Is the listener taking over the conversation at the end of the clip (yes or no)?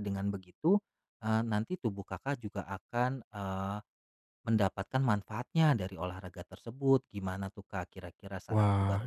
yes